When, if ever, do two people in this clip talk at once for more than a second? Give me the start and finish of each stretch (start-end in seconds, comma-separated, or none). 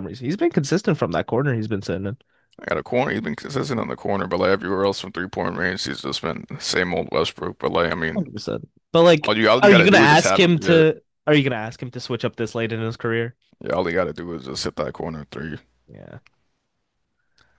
9.2-10.8